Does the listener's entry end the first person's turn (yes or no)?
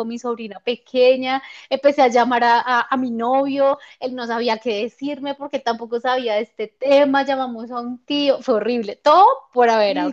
yes